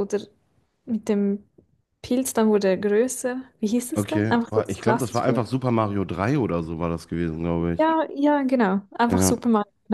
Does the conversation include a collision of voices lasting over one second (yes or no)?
yes